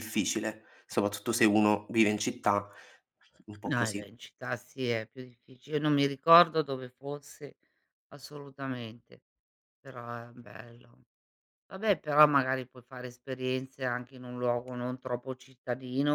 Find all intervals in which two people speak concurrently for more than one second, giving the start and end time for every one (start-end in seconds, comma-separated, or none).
none